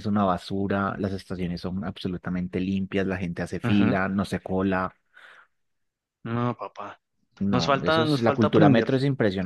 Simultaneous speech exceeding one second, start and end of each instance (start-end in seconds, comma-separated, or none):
7.5-8.9